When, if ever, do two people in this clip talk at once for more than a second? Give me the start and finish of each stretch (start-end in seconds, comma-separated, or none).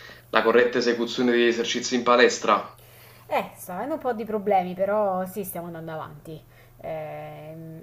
none